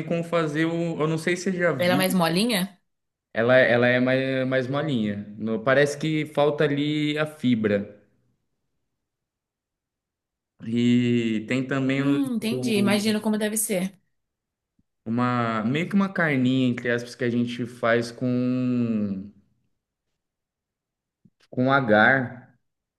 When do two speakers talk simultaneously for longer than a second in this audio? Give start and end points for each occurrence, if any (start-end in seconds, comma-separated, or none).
11.9-13.3